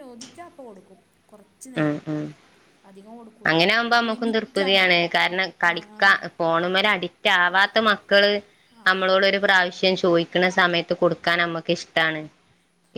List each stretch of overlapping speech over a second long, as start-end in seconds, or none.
none